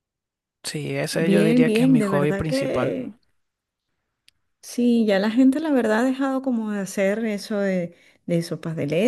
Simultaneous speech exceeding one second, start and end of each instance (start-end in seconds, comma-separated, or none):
1.1-3.0